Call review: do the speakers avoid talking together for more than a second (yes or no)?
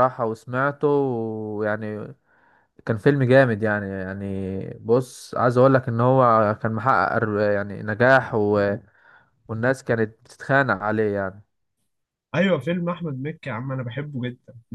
yes